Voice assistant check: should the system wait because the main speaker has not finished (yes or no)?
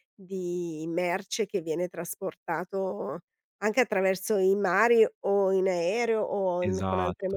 no